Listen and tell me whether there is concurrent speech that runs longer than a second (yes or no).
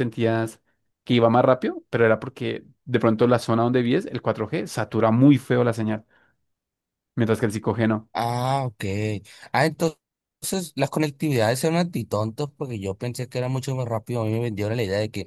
no